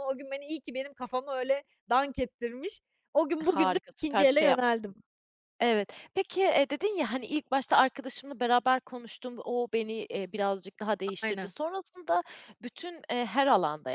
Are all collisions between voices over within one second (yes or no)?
no